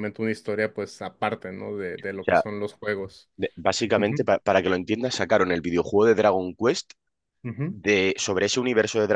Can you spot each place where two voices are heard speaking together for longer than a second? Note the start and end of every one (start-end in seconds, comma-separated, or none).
none